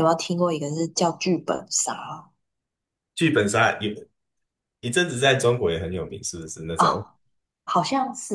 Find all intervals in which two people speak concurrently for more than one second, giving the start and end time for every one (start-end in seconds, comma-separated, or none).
none